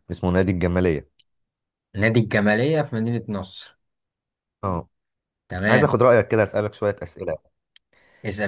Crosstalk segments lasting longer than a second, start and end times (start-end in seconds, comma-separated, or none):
none